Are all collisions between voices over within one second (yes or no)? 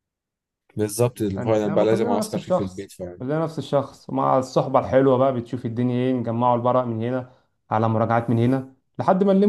no